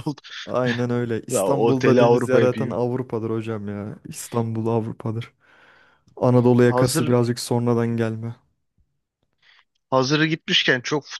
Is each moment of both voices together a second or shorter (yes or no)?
no